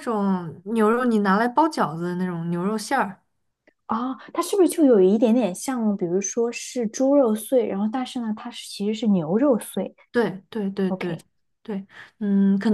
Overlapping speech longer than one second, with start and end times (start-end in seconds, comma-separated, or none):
none